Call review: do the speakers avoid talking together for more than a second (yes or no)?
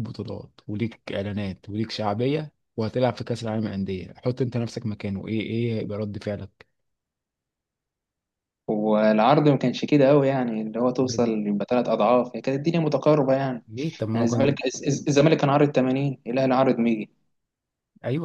yes